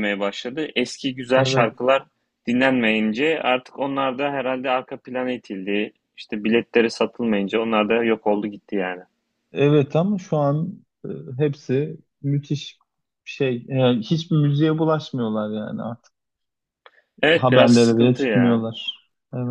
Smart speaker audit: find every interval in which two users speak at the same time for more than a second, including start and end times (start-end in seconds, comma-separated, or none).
17.3-18.7